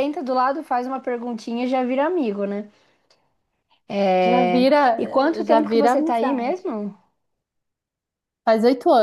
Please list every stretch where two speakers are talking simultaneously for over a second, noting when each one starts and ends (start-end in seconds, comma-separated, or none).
5.4-6.7